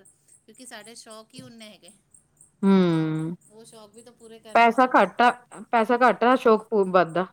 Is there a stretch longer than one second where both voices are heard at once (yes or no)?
no